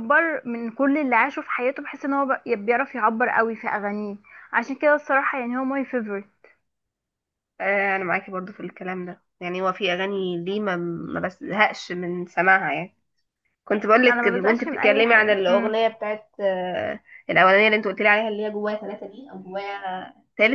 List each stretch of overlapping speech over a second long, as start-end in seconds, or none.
14.1-15.8